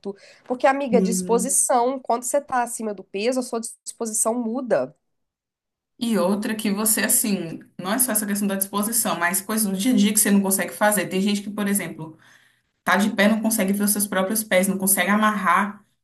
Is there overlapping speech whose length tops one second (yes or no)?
no